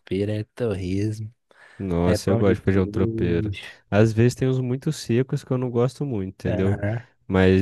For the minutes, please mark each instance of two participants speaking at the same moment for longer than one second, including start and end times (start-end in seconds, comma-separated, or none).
2.0-3.6